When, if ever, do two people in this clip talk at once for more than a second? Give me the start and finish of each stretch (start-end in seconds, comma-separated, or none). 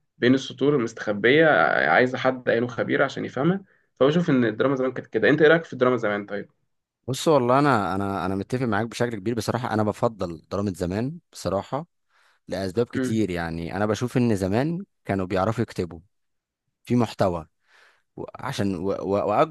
none